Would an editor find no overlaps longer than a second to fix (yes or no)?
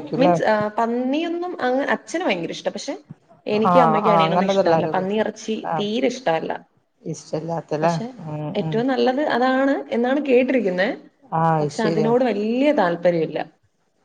no